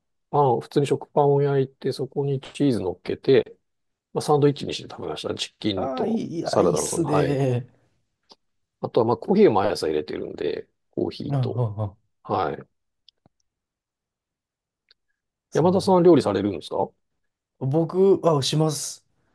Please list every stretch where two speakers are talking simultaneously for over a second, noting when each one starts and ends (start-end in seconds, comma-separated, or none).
5.8-7.4